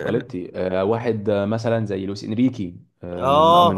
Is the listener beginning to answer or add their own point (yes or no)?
yes